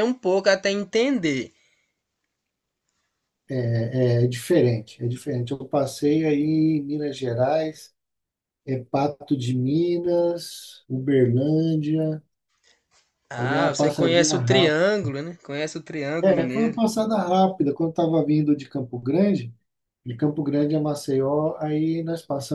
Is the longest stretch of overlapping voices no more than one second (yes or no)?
no